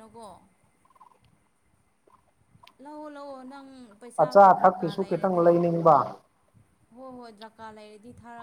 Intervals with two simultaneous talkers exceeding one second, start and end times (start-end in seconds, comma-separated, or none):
4.2-5.5